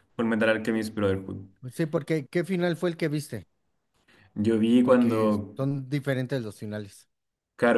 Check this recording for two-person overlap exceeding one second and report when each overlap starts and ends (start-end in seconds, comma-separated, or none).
none